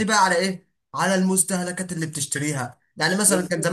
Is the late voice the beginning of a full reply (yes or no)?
no